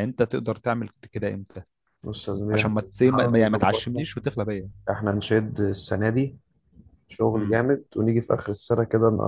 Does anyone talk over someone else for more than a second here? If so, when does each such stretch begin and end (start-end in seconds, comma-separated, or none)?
2.5-4.0